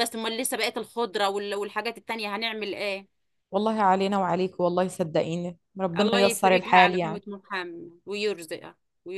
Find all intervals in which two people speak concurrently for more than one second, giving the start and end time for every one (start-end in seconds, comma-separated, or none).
6.0-7.2